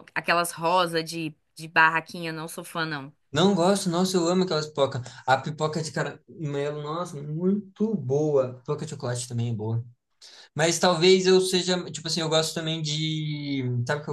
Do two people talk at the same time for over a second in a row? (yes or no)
no